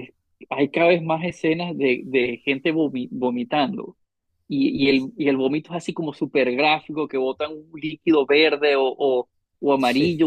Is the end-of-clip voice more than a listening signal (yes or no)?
no